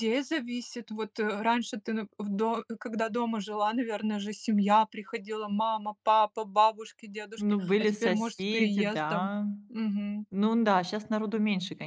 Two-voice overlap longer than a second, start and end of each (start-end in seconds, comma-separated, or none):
7.4-9.4